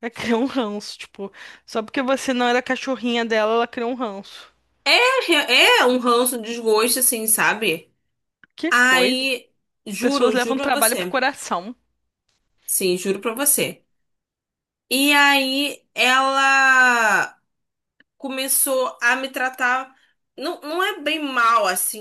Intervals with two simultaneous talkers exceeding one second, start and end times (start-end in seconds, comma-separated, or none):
10.0-11.2